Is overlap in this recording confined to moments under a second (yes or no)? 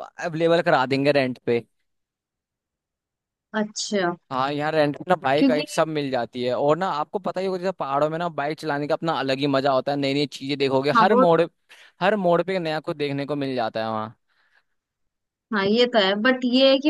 yes